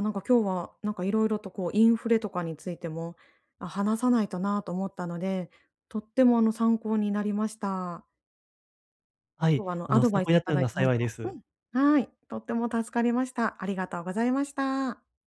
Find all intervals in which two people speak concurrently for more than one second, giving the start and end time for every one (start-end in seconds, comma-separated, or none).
9.5-11.1